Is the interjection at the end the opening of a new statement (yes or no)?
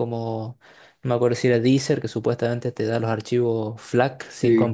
yes